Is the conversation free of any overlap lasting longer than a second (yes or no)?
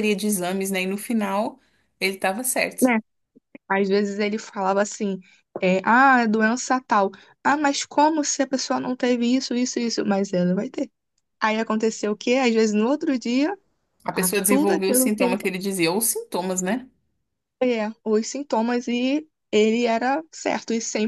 no